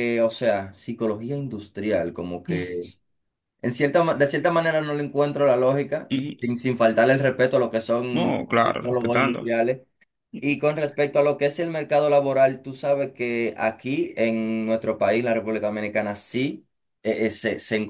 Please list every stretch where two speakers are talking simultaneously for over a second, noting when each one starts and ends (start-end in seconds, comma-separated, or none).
8.1-9.4